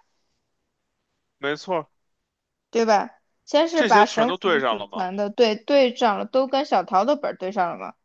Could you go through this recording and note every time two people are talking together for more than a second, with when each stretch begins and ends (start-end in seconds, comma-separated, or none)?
3.7-5.1